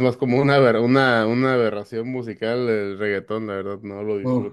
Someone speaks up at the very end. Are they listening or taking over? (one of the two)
listening